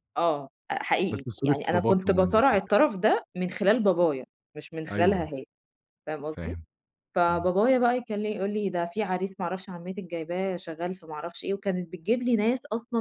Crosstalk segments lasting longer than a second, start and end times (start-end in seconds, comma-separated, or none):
1.1-2.7